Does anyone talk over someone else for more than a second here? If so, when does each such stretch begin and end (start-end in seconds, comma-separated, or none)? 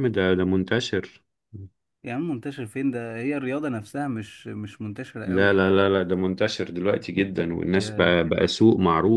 none